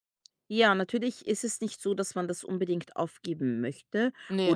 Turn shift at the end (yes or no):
no